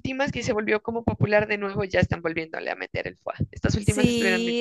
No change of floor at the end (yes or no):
no